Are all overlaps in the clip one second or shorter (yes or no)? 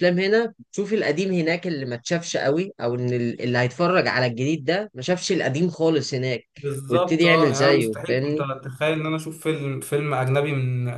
no